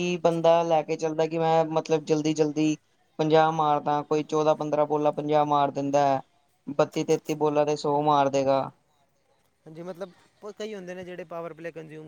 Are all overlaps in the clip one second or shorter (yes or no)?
yes